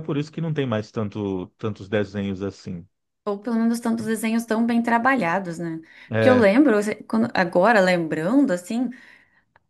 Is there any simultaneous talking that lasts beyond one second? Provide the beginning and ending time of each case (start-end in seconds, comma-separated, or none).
none